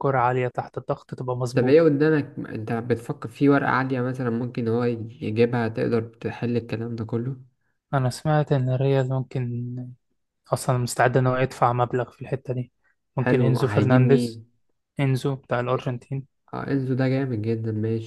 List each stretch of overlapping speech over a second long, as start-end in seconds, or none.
13.2-14.4